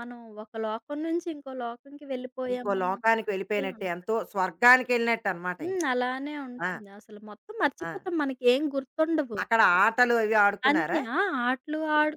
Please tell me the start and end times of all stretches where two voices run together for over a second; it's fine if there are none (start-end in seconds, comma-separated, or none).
2.5-4.0